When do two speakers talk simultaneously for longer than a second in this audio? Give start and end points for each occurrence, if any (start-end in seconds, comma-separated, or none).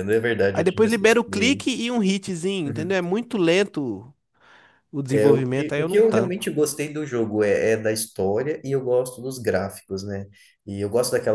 0.5-1.8, 5.1-6.5